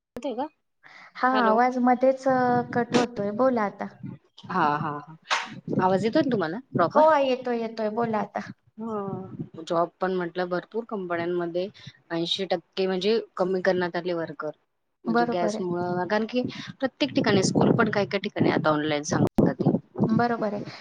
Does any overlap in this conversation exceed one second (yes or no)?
no